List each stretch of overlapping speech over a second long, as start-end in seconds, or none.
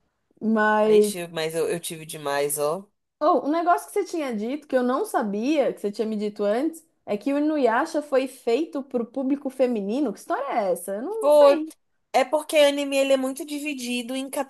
none